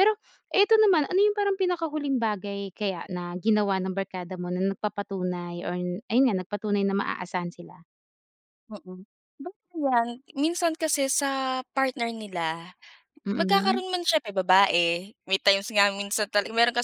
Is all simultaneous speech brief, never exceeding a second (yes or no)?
yes